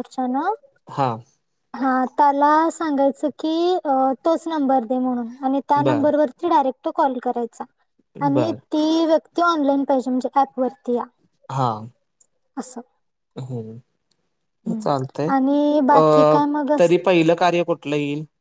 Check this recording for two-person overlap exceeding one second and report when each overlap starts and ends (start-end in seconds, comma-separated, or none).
none